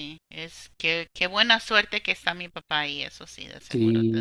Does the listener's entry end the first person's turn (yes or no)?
yes